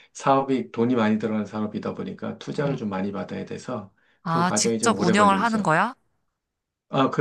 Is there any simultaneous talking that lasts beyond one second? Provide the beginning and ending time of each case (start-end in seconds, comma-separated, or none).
4.2-5.7